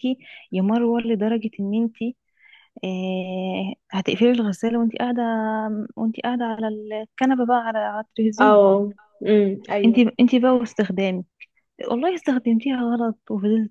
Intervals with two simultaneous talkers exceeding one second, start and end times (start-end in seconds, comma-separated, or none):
none